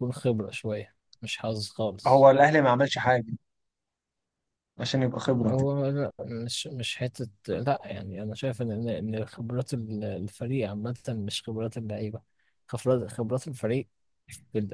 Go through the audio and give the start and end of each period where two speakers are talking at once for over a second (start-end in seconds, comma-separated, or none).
none